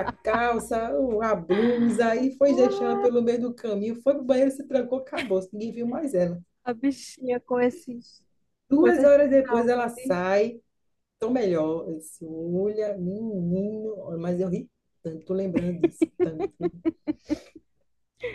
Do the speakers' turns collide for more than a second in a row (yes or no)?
yes